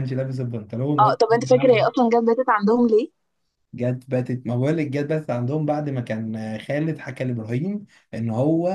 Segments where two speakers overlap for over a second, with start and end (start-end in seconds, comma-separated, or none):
none